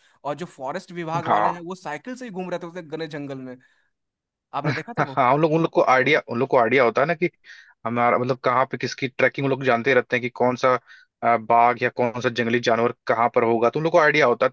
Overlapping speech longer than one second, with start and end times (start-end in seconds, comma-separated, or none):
none